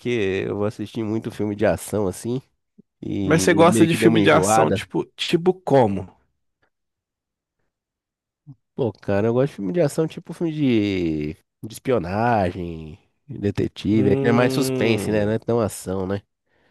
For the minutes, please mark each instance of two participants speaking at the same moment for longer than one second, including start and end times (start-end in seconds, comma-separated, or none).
3.2-4.8, 13.9-15.4